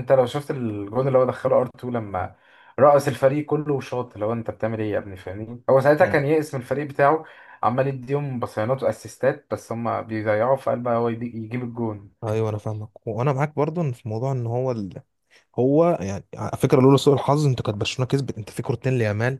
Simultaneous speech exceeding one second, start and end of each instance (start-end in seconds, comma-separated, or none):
none